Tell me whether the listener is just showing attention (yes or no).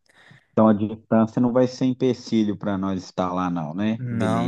no